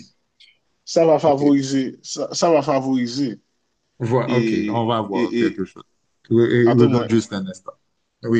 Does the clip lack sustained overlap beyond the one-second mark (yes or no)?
no